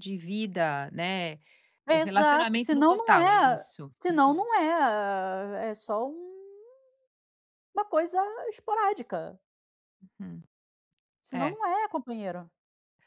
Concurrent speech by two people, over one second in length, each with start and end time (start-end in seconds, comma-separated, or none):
1.9-4.5